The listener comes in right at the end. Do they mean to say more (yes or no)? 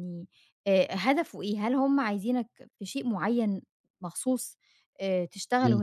no